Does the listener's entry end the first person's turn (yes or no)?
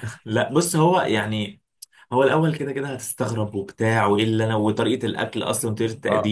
yes